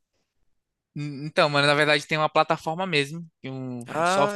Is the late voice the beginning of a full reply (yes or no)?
no